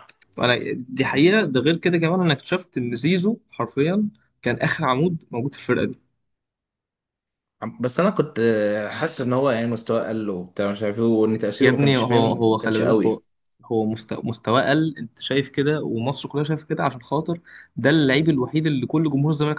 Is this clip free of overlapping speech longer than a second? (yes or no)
no